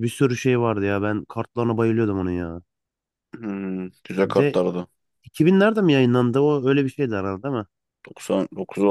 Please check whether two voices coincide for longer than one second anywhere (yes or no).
no